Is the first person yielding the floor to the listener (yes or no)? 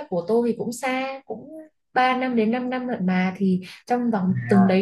no